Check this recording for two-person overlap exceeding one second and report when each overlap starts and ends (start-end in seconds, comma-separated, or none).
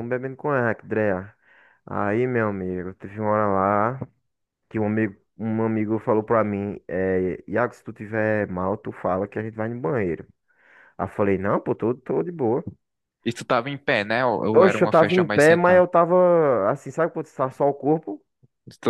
14.5-15.8